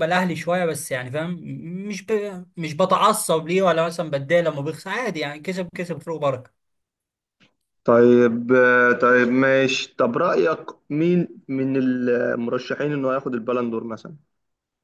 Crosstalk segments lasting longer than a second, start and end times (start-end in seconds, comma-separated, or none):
none